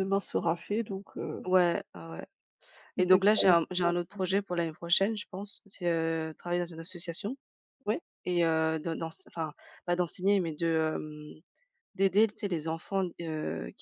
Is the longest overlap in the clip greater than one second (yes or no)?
yes